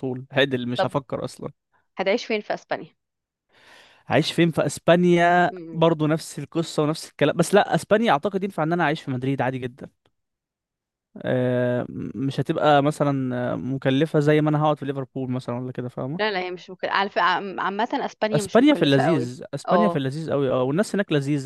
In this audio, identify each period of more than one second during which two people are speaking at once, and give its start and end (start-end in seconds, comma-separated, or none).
18.3-20.0